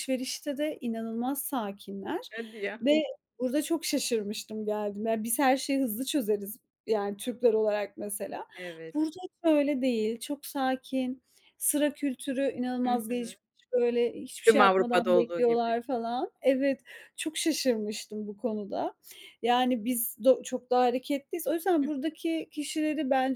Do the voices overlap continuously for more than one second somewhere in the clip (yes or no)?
yes